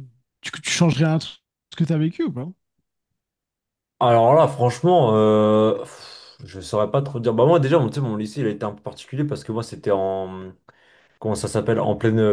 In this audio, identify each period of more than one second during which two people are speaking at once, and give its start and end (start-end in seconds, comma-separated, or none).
none